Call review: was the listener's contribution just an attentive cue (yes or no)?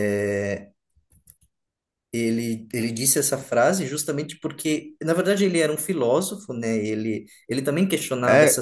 no